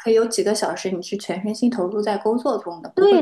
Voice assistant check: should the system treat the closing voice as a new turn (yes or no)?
yes